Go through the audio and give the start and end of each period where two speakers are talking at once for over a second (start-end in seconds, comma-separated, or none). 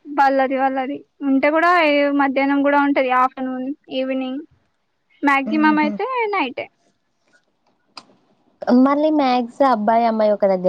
none